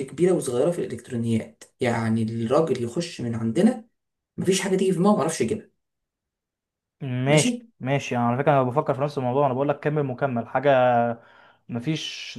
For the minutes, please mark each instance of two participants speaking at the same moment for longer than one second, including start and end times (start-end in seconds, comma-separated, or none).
none